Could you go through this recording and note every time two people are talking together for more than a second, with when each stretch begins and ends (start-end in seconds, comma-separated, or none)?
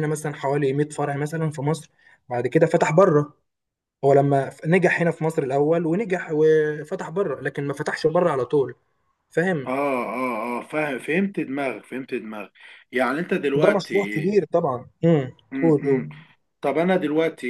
none